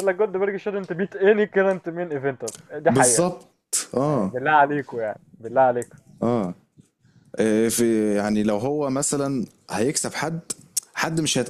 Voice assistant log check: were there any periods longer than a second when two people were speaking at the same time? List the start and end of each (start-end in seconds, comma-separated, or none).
none